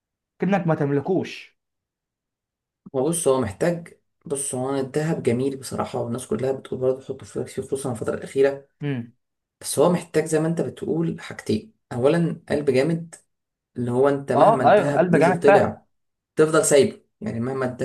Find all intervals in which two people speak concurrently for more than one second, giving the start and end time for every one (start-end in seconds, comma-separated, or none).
14.3-15.8